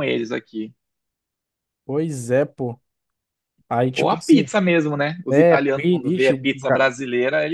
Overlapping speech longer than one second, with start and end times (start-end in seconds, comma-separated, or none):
5.3-6.9